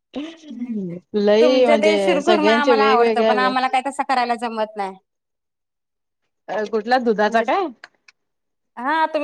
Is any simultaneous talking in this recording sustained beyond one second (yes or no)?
yes